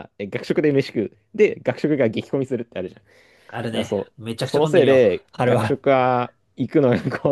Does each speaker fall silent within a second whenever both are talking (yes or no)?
no